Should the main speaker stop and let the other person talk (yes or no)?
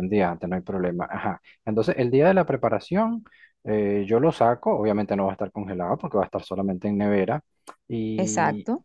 no